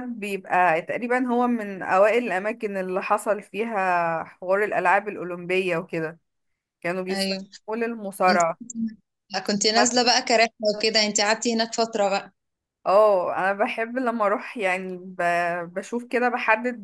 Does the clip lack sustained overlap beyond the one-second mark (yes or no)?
yes